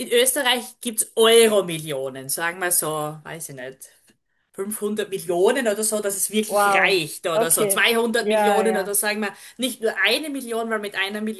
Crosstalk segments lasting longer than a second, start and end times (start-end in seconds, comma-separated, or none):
6.5-8.9